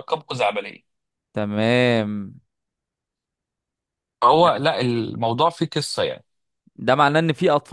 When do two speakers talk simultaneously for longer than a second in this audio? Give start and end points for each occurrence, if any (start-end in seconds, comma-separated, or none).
none